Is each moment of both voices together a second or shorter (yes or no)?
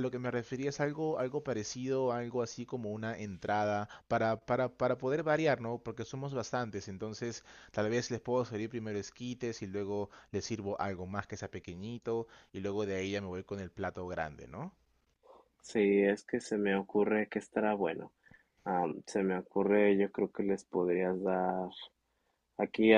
yes